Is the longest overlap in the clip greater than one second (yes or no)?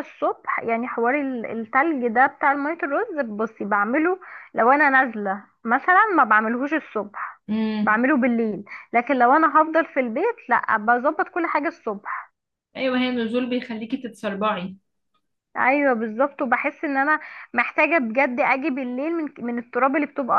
no